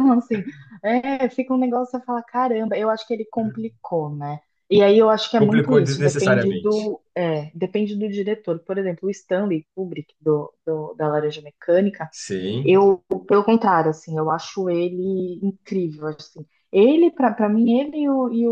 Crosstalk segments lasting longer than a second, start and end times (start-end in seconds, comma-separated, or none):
5.4-6.8